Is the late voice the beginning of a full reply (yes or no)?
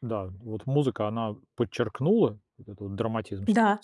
yes